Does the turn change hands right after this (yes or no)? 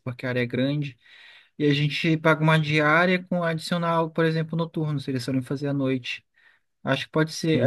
no